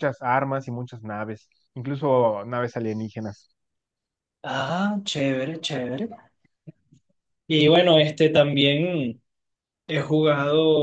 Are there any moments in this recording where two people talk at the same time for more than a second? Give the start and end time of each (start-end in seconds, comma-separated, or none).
none